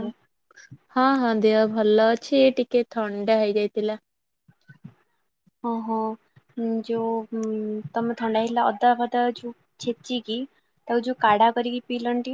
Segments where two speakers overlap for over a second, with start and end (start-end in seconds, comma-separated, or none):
none